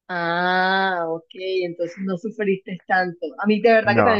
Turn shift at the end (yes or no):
no